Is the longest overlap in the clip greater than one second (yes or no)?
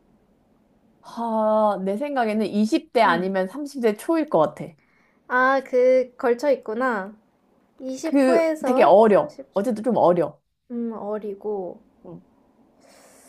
yes